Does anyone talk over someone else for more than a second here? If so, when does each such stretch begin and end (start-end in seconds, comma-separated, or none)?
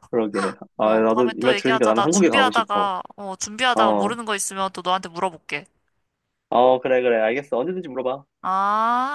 0.8-3.0